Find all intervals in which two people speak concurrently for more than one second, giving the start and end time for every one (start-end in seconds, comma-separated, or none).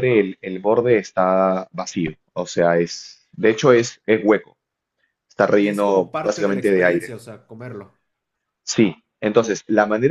5.5-7.2